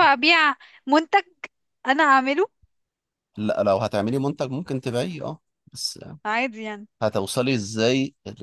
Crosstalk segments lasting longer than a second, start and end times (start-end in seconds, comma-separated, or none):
none